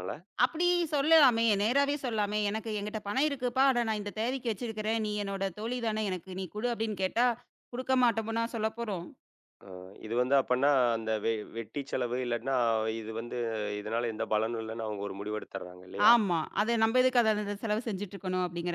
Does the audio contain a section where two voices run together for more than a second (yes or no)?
no